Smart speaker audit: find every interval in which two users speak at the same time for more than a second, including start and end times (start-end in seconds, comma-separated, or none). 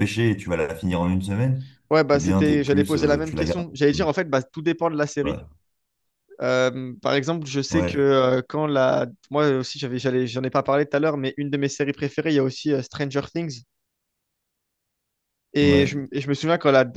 2.1-3.6